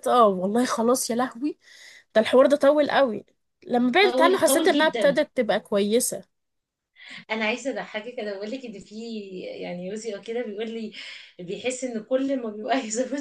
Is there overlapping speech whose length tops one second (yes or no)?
yes